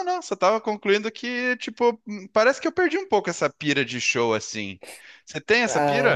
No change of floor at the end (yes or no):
no